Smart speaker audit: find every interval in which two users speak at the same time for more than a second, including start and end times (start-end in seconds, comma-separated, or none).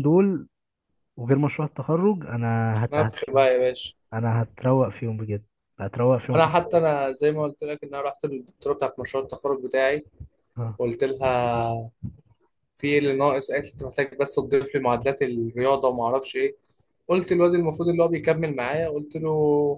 none